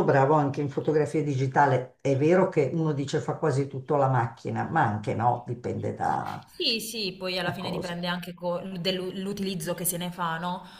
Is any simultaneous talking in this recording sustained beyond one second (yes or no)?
no